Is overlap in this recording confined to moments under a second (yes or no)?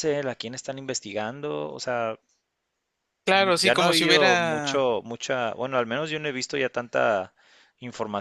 no